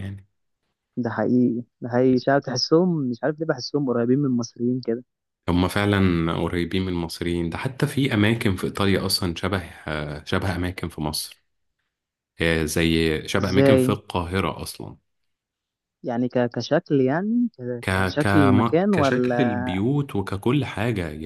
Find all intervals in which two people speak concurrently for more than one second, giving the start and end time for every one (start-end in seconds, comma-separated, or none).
17.8-19.5